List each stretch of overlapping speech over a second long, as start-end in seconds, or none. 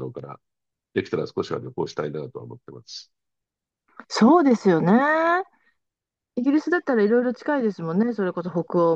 none